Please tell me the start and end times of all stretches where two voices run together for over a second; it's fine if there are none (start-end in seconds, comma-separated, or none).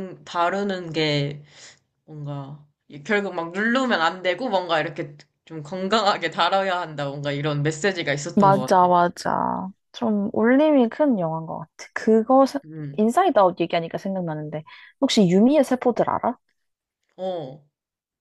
none